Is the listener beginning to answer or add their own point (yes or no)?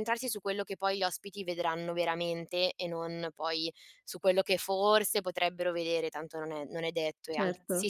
yes